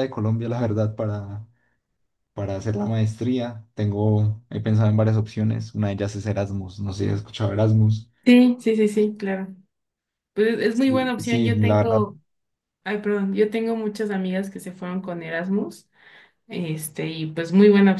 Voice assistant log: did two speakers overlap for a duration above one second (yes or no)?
yes